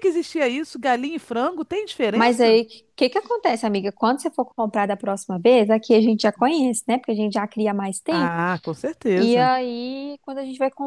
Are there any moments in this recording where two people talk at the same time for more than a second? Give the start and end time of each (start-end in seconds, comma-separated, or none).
none